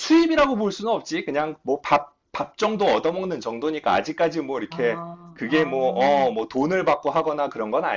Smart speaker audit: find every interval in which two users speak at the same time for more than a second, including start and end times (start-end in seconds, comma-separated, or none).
4.7-6.3